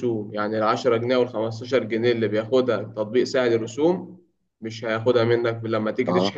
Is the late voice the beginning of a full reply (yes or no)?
no